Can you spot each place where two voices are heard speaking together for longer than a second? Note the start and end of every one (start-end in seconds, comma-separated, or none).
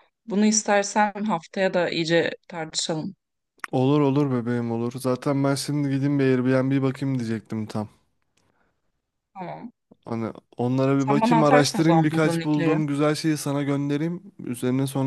11.0-12.8